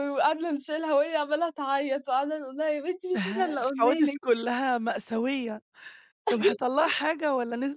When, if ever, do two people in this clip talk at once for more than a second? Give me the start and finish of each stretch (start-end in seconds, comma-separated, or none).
3.1-4.4